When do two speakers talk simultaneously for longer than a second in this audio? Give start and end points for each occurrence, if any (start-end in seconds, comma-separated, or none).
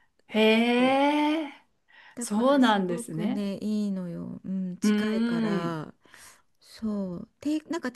2.2-3.5